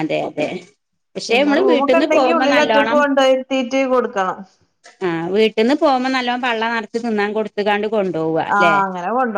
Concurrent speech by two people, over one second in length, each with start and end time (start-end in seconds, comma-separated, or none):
1.3-3.0